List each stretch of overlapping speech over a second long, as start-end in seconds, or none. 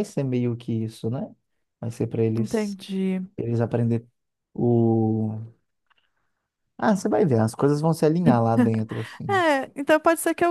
none